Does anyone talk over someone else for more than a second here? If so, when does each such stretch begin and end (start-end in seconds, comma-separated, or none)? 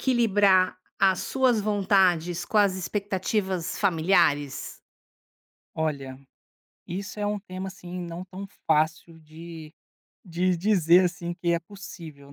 none